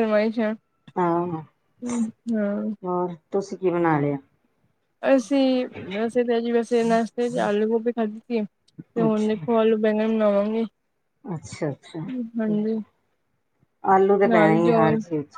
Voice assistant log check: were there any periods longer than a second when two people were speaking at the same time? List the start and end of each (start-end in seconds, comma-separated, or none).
none